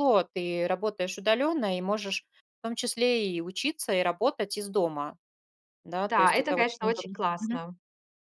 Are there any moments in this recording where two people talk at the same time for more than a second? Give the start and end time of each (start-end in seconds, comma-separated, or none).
6.0-7.6